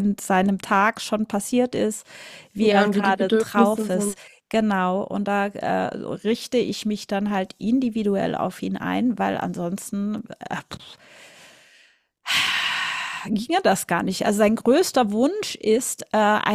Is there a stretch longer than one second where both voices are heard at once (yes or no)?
yes